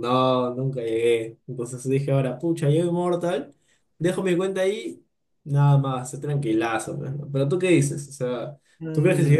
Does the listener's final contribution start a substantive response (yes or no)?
yes